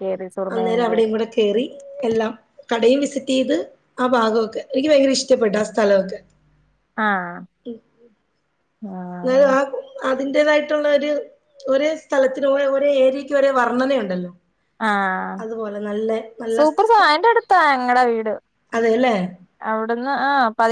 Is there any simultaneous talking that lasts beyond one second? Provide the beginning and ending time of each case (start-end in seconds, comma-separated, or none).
none